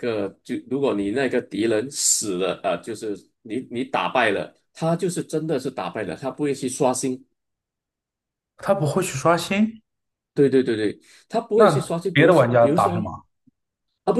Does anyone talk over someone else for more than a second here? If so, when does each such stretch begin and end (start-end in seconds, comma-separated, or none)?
11.5-13.1